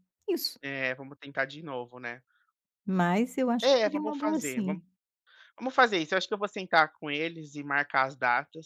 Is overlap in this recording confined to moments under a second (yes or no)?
no